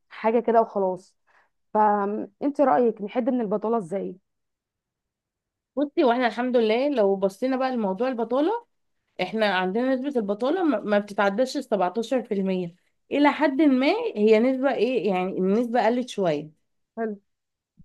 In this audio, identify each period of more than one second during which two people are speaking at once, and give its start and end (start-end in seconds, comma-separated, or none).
none